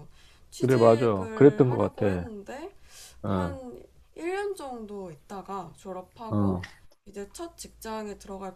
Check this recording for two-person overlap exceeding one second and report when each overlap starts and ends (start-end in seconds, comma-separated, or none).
0.6-2.3